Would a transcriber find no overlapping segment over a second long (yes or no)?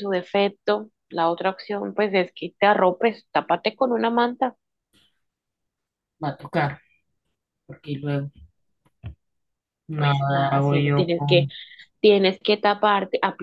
no